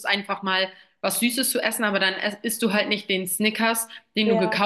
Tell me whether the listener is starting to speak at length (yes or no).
no